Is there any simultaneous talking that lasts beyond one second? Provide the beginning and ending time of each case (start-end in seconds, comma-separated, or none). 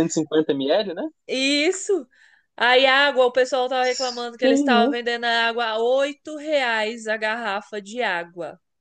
none